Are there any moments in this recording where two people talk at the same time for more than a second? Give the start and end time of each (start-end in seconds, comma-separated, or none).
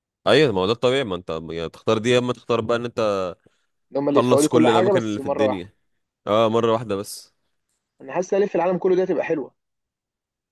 4.1-5.7